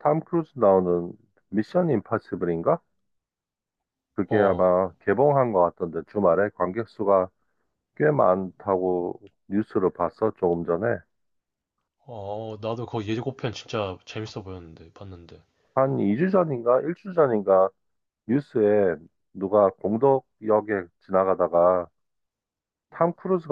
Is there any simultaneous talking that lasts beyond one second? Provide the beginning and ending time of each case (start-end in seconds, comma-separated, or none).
none